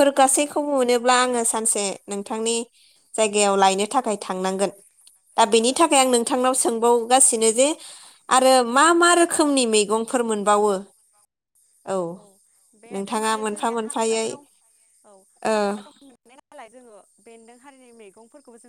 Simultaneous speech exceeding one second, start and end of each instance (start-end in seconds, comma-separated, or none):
12.9-14.3